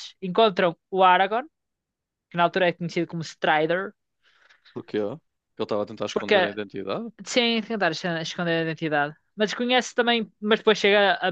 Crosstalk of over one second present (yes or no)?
no